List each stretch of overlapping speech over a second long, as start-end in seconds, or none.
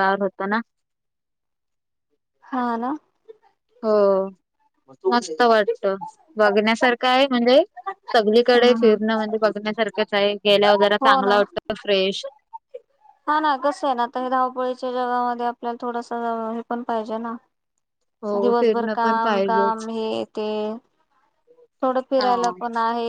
18.4-19.9